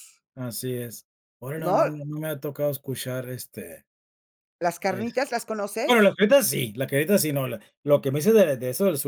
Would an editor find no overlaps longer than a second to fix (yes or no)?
yes